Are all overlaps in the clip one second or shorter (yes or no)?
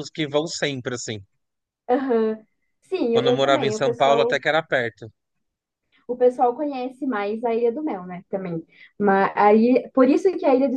no